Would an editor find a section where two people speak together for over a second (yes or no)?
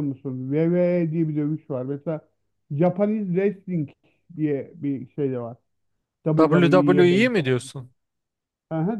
yes